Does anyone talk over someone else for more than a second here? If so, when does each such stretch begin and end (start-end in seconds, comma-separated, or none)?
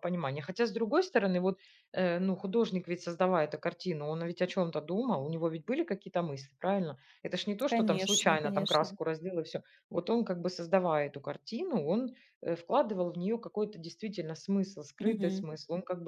7.7-9.0